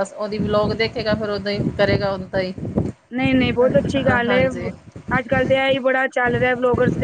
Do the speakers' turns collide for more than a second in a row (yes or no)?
no